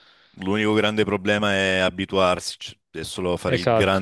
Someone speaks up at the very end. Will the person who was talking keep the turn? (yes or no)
yes